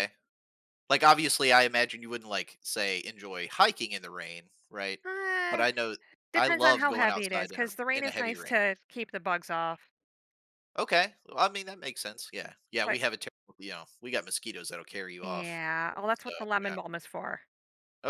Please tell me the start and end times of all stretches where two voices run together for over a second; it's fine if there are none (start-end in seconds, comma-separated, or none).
6.3-8.6